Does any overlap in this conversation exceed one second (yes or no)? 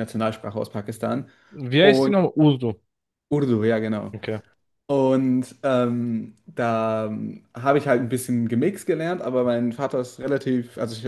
no